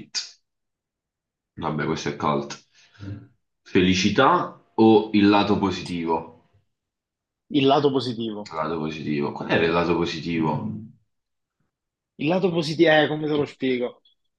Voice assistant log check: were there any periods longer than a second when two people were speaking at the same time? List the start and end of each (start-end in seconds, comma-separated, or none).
none